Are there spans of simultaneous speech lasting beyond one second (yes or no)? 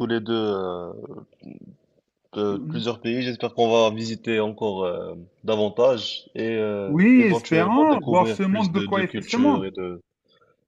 yes